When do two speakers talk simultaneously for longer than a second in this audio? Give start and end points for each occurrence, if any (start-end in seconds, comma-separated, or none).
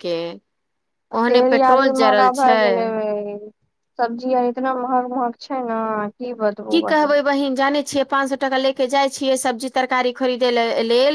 1.3-2.8